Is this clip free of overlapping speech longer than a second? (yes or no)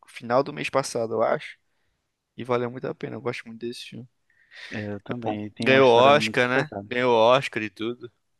no